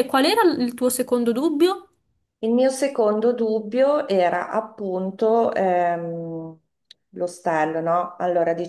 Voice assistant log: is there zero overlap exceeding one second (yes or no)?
yes